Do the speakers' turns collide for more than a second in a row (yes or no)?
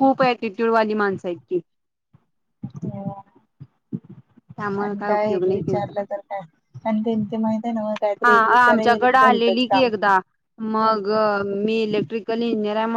yes